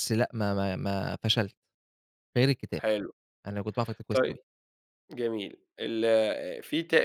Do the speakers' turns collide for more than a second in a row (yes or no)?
no